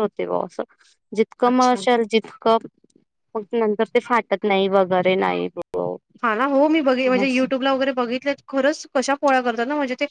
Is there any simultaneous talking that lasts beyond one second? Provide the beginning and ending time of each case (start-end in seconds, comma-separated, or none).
none